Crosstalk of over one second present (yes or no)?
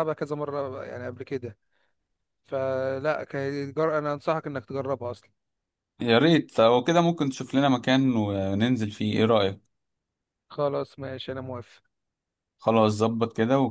no